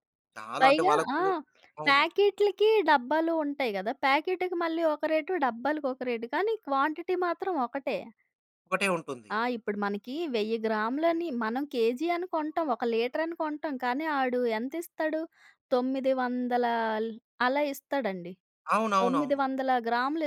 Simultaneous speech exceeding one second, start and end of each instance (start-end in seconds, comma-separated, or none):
none